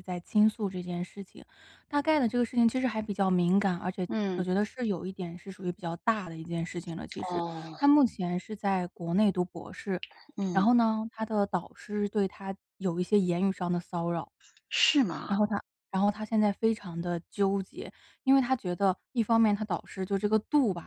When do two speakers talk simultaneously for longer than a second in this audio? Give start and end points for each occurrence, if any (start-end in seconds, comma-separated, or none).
none